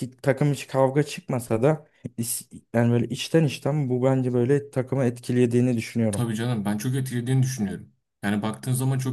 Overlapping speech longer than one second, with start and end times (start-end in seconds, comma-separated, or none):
none